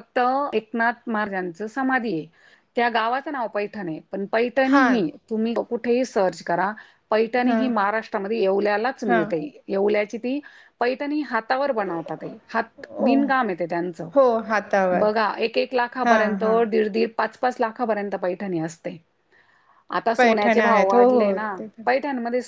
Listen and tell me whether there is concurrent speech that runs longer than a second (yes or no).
yes